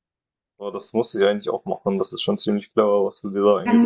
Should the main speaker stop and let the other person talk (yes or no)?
yes